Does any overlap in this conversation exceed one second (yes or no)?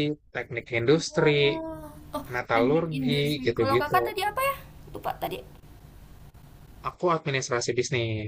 yes